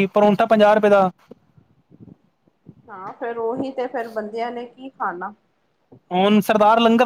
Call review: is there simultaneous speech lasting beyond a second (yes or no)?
no